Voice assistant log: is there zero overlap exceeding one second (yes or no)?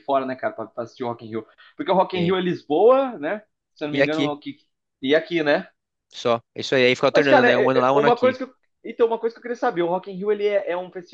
no